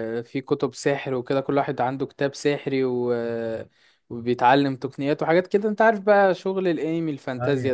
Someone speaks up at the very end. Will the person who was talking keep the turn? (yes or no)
yes